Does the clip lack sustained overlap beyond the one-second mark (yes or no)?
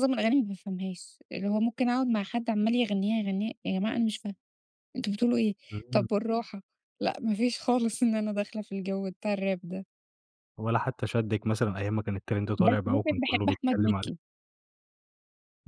no